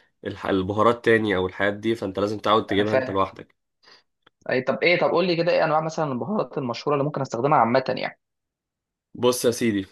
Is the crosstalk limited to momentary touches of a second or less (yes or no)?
yes